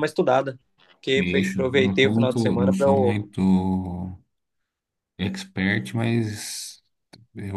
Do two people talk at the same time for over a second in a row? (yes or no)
yes